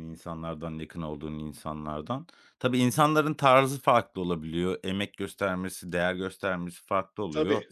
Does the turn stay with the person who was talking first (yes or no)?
yes